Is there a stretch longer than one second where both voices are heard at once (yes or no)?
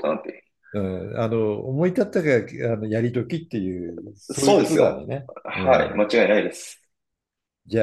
yes